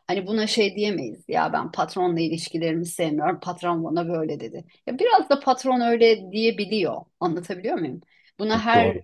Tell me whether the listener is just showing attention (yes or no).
yes